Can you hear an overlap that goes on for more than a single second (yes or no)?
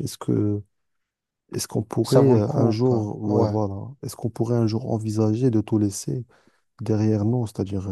yes